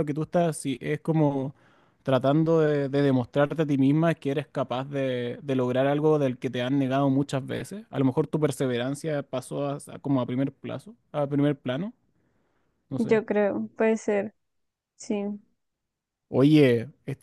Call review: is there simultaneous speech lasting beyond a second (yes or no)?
no